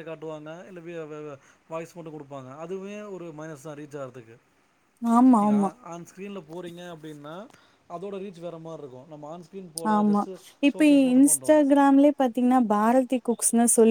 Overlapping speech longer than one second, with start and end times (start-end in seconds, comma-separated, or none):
none